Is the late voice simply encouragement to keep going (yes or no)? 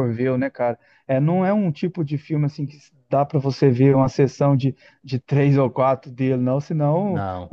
yes